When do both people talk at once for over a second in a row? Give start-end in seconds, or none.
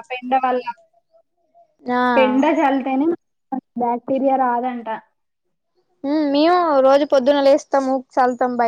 none